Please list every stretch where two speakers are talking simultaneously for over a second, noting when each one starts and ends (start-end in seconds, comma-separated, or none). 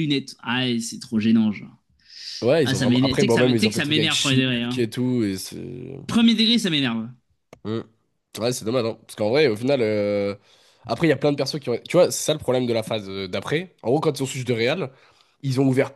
2.6-4.8